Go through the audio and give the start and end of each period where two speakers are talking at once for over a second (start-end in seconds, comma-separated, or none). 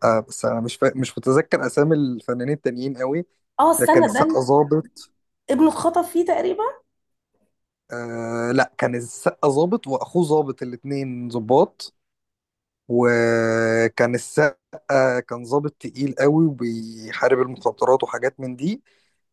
none